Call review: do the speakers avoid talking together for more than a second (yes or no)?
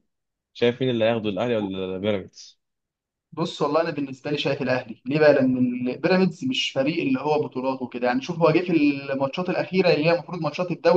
yes